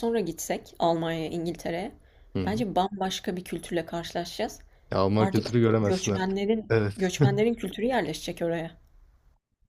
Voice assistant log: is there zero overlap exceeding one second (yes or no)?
no